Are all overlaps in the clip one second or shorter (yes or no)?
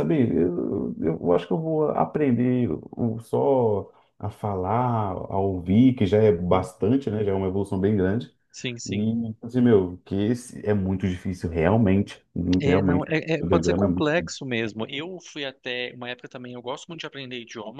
no